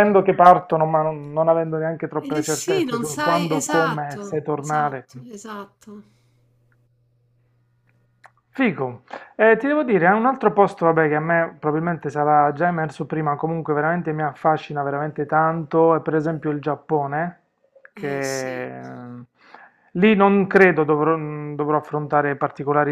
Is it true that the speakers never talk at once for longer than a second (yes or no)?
no